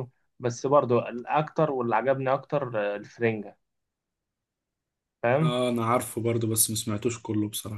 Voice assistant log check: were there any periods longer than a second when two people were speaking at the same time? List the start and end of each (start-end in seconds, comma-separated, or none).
none